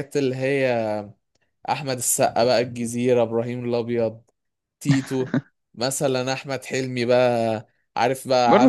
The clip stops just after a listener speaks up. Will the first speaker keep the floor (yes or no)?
yes